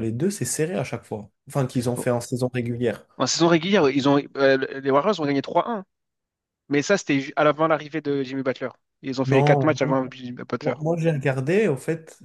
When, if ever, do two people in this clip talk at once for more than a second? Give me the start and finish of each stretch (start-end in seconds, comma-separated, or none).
none